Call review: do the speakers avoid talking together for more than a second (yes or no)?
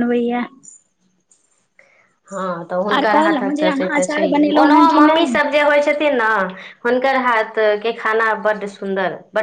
no